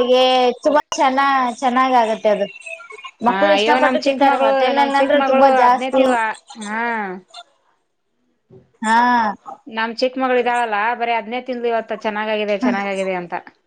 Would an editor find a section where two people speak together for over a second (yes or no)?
yes